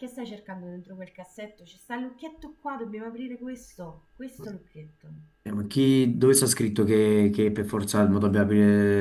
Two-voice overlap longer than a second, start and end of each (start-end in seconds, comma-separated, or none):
none